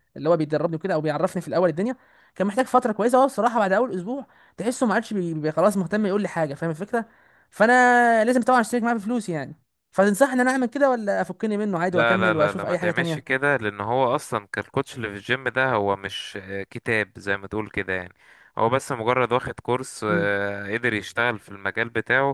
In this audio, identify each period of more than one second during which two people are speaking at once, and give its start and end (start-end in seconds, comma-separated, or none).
11.9-13.4